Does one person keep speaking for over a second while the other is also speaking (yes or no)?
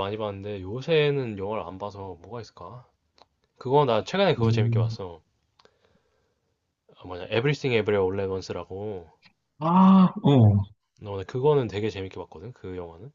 no